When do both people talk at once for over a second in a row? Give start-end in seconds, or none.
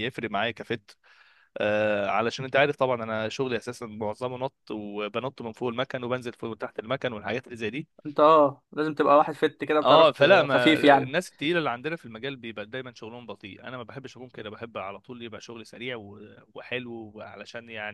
9.8-11.2